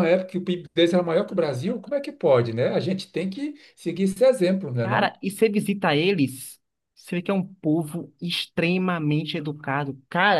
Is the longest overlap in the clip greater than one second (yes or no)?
no